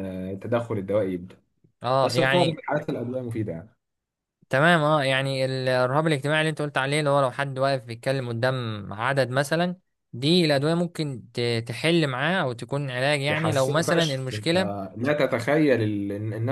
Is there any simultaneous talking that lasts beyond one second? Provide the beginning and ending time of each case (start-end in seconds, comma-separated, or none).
13.3-14.5